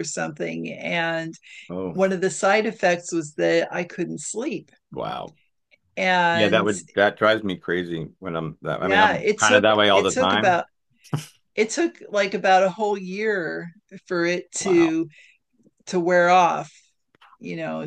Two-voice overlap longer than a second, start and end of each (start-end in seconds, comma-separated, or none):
8.8-10.6